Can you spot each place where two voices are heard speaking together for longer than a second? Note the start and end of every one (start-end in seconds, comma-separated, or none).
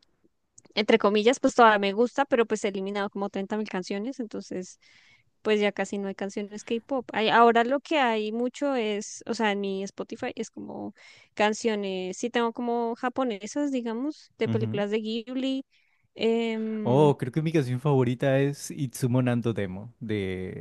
none